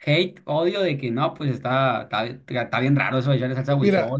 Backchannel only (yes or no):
no